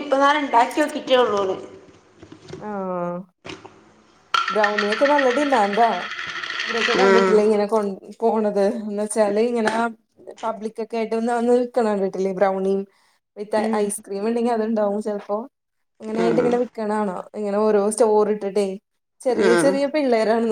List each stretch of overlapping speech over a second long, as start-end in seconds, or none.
none